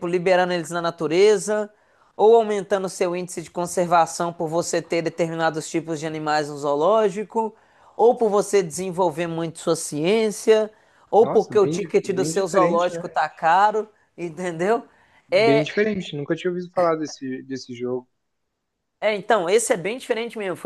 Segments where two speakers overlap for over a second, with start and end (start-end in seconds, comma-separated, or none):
11.2-13.1